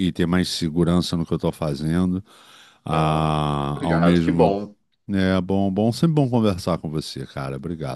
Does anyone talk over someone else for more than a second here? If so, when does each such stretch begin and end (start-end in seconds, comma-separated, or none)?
2.9-4.5